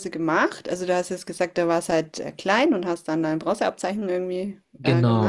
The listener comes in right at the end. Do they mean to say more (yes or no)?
yes